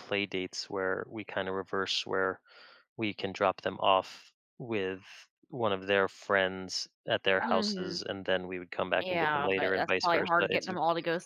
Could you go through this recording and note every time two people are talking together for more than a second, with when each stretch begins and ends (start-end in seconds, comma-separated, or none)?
9.0-10.8